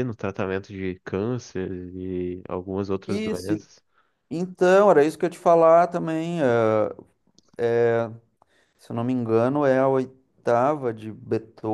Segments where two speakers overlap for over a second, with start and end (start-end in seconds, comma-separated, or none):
none